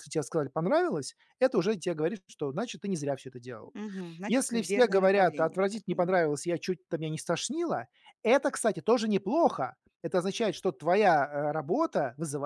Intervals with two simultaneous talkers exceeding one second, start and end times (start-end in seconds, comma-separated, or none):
4.3-6.3